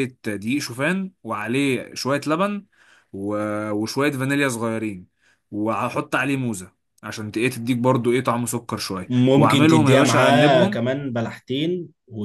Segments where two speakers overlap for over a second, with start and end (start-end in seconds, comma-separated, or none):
9.1-10.8